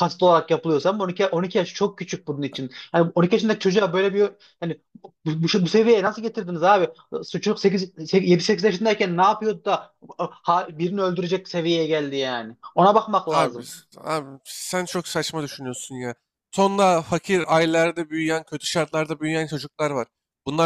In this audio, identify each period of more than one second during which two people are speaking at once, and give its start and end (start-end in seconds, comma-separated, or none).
none